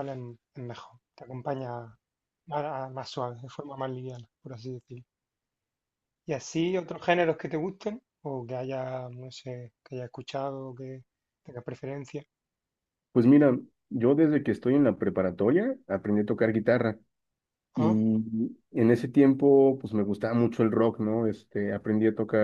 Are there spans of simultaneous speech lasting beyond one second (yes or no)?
no